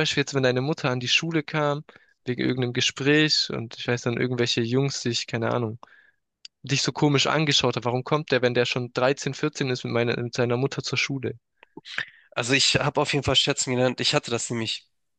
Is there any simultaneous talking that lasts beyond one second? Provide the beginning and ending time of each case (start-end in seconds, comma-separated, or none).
none